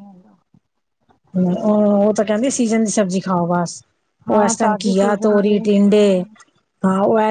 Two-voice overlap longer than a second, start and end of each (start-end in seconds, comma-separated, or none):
4.3-6.0